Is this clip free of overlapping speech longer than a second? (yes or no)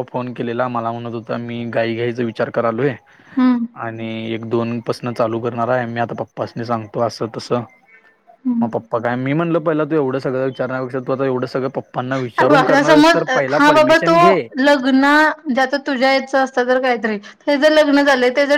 yes